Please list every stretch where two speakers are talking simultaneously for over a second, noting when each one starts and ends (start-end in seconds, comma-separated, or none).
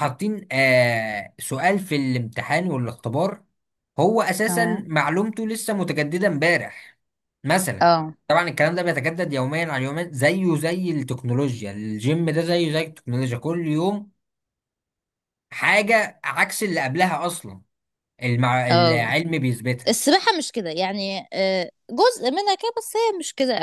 none